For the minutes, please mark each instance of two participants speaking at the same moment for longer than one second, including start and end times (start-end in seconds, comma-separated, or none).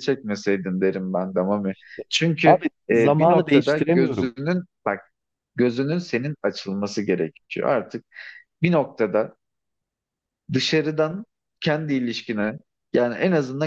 2.4-4.3